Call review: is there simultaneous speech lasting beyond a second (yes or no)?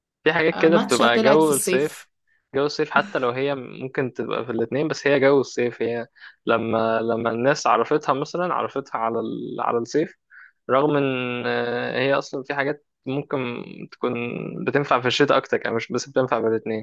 yes